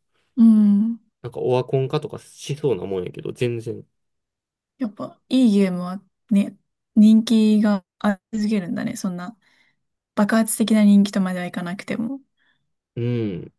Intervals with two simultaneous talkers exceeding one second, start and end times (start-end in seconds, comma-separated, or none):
none